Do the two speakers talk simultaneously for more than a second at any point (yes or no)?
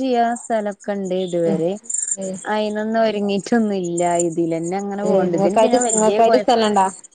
yes